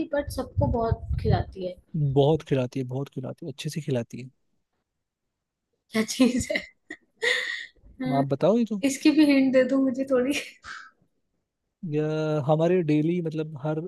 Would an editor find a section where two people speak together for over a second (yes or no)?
no